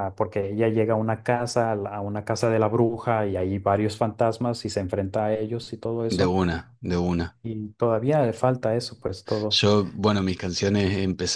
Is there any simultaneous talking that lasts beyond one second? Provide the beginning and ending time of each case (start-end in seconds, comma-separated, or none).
none